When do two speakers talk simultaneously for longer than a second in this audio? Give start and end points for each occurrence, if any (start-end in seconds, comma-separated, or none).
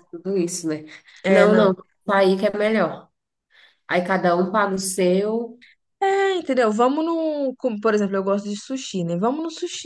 none